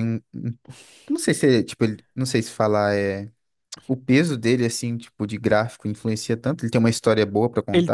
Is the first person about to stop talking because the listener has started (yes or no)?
yes